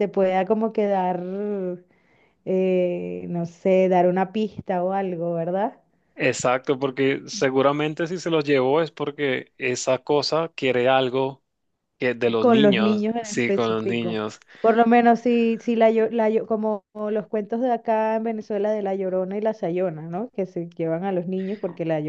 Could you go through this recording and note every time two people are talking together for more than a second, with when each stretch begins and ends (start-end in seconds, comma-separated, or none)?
12.4-14.2